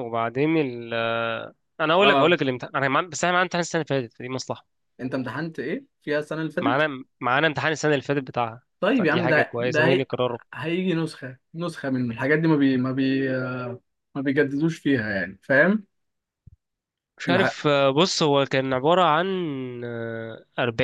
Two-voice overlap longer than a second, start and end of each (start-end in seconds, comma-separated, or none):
8.8-10.1